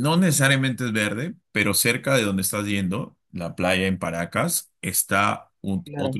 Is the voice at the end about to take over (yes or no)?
no